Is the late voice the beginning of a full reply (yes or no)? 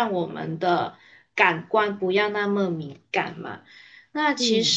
no